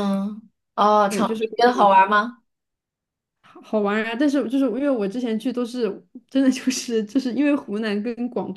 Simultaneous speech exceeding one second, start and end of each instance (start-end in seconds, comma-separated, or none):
none